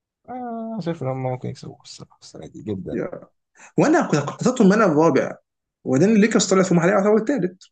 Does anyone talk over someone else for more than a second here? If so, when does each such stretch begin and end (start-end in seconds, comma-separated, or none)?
none